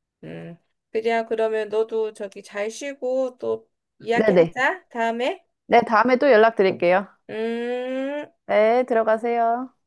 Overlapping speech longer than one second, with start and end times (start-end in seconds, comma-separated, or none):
none